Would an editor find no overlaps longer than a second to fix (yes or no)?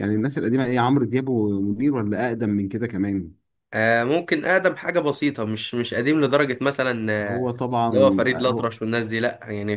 yes